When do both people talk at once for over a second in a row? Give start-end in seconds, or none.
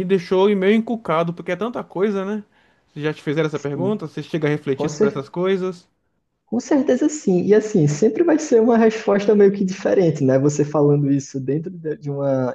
none